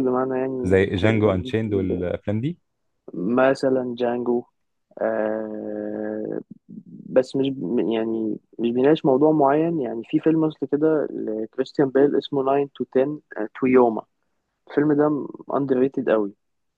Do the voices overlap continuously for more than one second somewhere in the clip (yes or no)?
yes